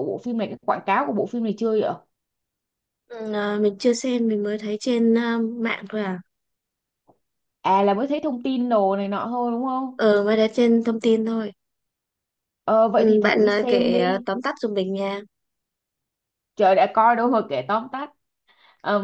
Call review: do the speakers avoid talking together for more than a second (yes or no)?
no